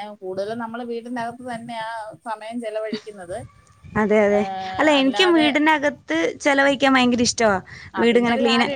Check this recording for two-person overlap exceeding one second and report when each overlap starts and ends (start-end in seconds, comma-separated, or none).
none